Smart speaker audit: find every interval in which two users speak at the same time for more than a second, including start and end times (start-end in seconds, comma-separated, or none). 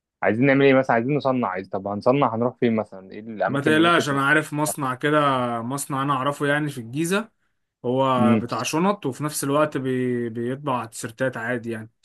none